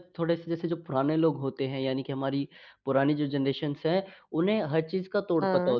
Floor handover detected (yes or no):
no